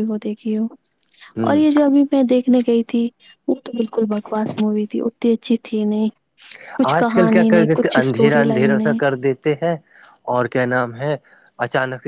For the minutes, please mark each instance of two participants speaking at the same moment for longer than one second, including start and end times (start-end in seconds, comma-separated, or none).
7.0-9.0